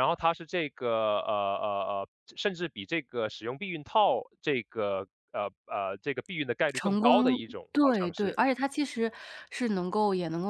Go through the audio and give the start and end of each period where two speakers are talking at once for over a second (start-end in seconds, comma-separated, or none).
6.7-8.4